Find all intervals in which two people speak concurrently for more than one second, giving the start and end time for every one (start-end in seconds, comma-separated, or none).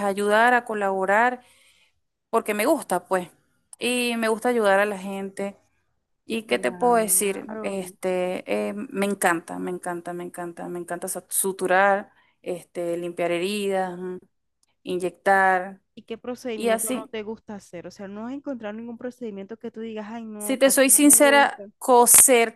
6.5-7.8, 20.4-21.6